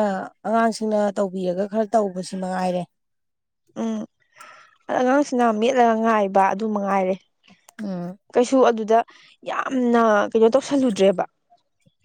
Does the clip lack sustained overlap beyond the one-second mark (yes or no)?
yes